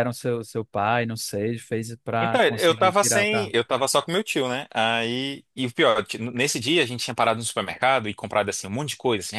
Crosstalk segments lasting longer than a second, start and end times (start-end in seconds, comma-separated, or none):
2.2-3.5